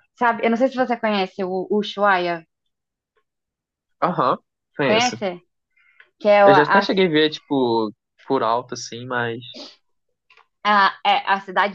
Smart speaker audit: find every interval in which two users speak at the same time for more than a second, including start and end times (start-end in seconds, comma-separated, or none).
none